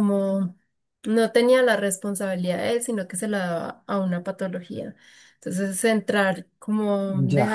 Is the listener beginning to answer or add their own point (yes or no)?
no